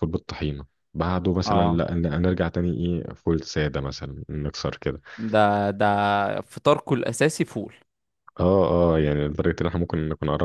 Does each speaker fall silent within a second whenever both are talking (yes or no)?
yes